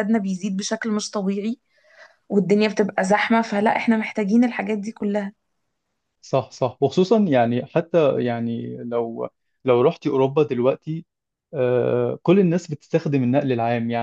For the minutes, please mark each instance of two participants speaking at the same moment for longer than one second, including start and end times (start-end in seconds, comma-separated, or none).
none